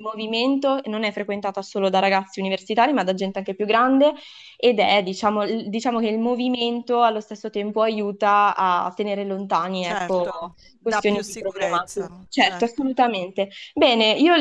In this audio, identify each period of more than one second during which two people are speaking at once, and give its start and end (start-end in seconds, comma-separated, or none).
9.8-12.9